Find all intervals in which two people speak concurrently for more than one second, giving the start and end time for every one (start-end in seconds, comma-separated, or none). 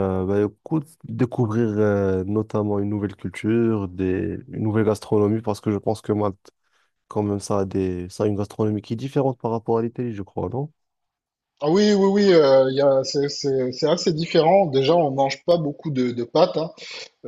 none